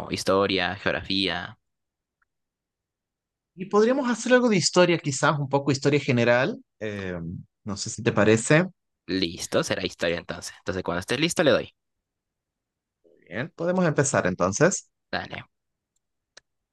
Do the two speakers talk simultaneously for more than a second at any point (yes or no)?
no